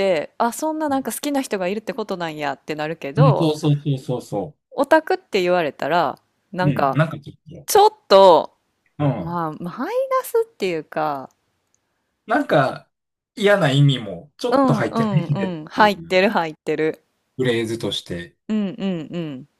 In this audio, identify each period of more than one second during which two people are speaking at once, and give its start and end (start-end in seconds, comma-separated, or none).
14.5-16.2